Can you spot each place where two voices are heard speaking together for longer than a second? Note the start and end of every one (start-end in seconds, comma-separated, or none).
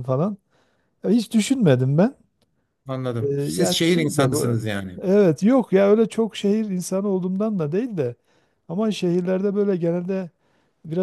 3.2-4.5